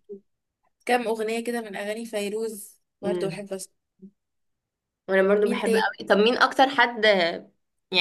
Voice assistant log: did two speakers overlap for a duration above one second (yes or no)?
no